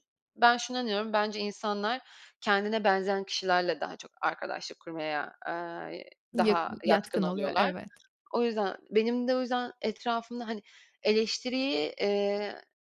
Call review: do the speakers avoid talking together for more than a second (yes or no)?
no